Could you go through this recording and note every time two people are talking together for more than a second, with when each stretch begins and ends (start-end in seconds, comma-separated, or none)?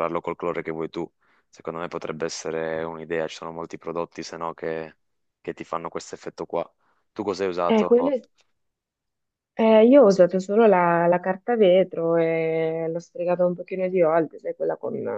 none